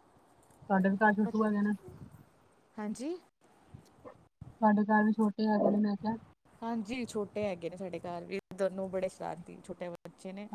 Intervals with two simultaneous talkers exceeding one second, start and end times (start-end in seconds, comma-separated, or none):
none